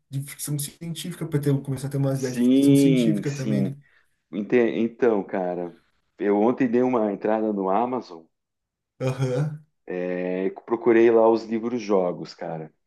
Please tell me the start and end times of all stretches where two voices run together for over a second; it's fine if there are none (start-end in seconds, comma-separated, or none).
2.1-3.8